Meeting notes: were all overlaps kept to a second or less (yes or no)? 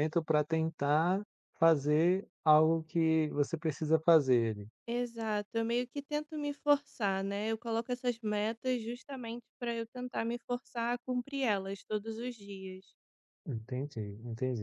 yes